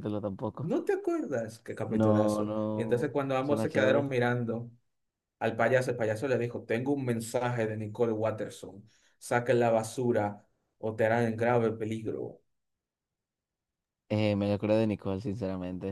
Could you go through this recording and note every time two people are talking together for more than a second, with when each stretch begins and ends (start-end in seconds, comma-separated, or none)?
1.9-4.0